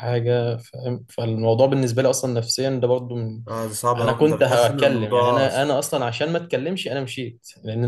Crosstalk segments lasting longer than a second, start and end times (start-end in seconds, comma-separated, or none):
4.0-5.5